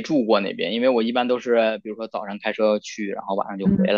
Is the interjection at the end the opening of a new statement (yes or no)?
yes